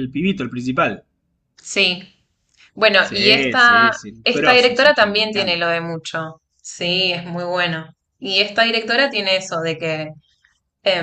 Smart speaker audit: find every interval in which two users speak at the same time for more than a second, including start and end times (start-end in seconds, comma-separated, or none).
3.0-5.7